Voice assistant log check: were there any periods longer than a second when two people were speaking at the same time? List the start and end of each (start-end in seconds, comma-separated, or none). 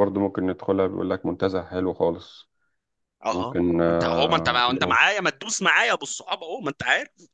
3.3-5.0